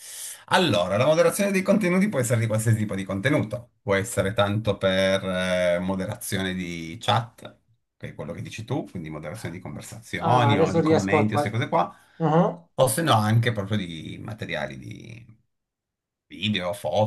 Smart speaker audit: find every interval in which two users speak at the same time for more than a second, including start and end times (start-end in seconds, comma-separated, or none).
10.2-11.6